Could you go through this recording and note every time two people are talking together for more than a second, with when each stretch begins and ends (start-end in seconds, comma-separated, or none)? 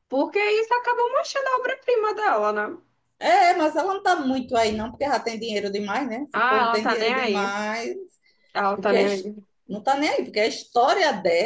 6.3-7.6